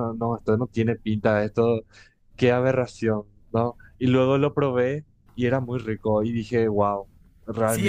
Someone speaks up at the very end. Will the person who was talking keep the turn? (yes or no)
no